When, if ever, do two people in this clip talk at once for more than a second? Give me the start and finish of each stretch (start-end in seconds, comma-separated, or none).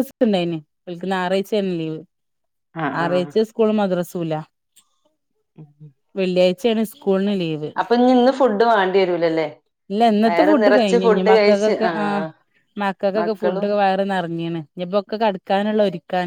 10.2-11.9